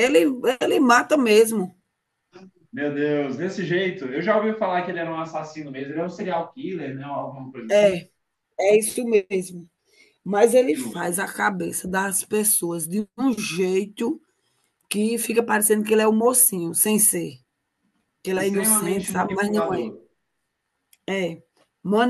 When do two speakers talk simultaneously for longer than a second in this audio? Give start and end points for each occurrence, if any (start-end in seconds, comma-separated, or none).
18.4-19.9